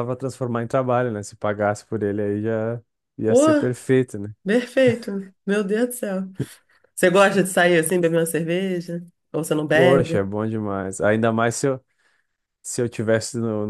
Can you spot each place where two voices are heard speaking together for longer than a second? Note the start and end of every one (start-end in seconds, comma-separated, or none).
none